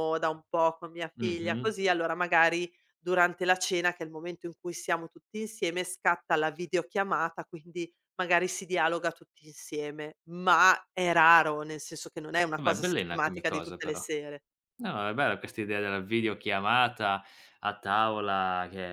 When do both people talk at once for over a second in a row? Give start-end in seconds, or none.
12.5-14.1